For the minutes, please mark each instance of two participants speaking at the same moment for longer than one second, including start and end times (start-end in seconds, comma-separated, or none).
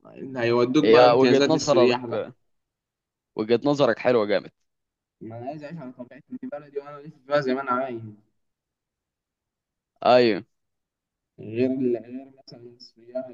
0.8-2.2